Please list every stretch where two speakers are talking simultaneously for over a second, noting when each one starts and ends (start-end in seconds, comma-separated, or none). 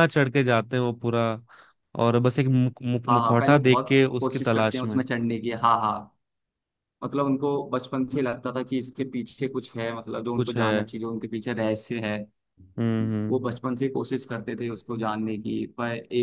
3.1-5.0